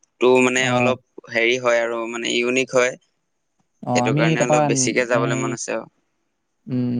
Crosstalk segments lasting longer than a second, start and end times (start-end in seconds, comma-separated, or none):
3.9-5.5